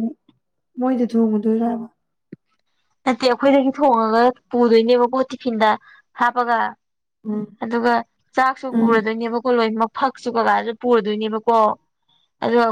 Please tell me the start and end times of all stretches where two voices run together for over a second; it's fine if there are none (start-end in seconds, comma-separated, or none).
none